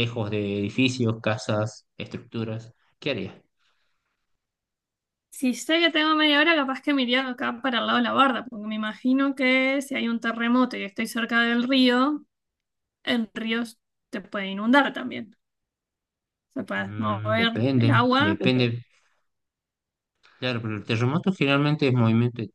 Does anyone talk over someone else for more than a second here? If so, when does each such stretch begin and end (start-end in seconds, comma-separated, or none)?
16.8-18.4